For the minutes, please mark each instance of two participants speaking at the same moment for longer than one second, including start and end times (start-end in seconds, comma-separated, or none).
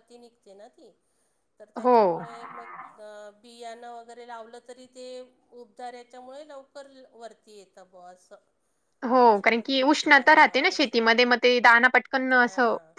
9.2-11.0